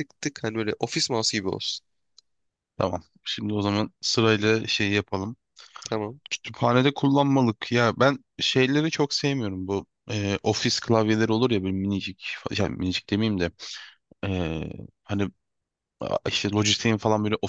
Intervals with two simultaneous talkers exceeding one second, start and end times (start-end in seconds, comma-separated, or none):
none